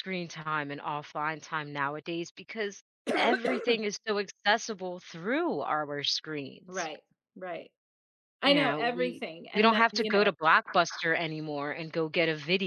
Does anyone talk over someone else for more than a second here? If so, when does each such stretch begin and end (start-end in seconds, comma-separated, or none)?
8.4-10.3